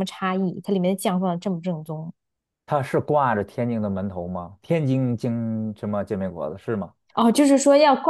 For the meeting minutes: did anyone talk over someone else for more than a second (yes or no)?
no